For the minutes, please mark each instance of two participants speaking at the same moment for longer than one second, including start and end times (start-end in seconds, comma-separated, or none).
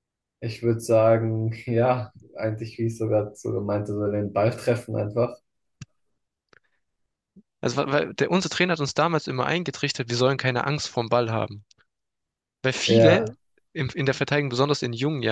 none